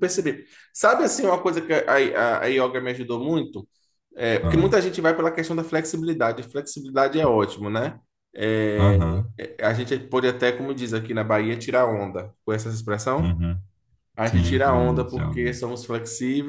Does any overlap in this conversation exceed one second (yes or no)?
yes